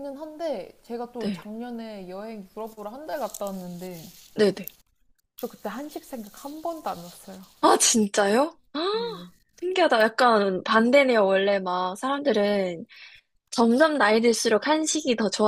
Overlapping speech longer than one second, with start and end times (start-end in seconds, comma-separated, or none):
none